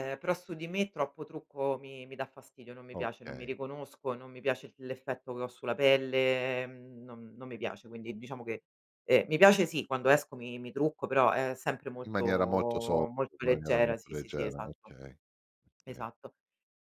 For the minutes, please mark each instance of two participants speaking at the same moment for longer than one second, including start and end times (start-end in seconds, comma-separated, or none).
13.1-14.9